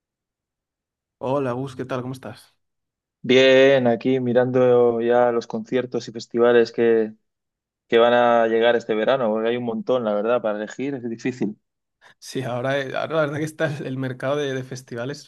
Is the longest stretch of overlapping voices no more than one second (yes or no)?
yes